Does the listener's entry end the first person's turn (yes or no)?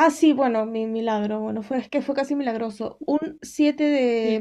no